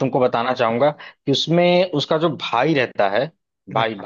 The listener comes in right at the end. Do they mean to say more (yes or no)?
no